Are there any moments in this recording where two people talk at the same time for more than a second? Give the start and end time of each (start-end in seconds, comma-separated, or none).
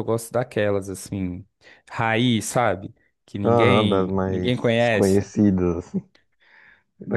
3.4-5.3